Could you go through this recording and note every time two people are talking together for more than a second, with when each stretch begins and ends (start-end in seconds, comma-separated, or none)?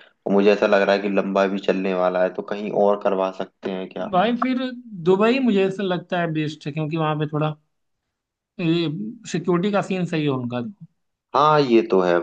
none